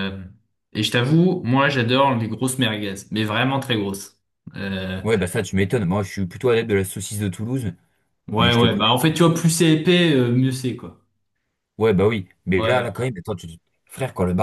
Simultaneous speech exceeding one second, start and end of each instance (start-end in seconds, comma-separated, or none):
none